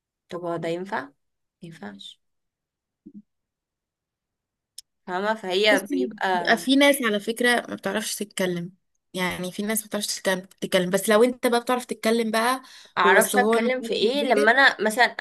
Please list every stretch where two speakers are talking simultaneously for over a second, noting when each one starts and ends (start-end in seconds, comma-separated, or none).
13.2-14.5